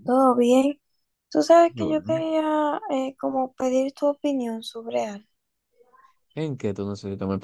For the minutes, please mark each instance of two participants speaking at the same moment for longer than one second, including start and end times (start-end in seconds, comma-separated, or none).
none